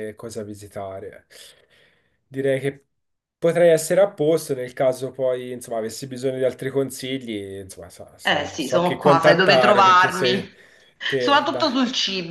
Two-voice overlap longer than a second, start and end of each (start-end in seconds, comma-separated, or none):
8.2-10.4